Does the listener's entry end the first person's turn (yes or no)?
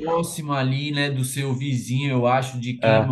no